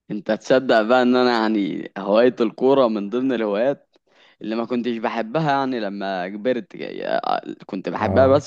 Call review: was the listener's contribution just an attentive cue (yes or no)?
yes